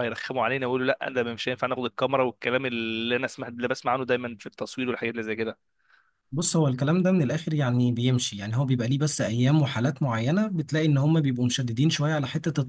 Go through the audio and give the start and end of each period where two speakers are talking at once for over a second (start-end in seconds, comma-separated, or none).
none